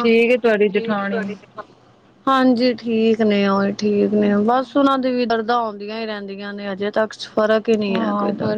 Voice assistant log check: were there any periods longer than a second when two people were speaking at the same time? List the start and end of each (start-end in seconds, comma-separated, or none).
none